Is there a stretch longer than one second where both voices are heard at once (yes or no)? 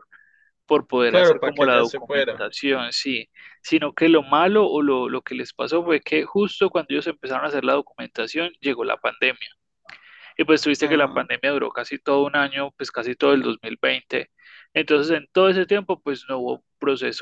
yes